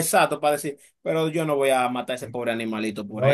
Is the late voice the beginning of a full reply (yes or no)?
yes